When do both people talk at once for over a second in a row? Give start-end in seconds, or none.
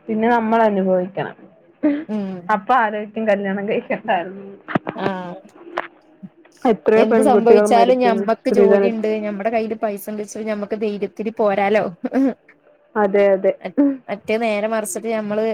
7.0-9.0